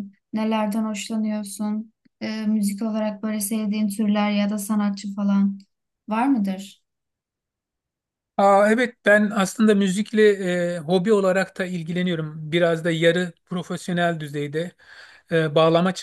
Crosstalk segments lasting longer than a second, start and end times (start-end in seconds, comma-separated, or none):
none